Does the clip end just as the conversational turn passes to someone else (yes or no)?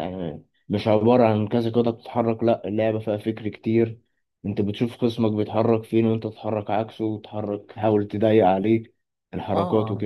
yes